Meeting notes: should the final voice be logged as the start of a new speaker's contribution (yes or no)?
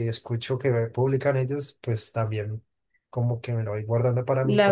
no